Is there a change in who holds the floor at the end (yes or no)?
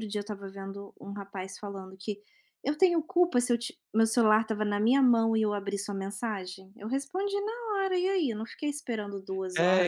yes